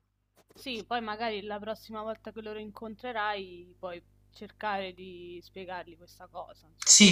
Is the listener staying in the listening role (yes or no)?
no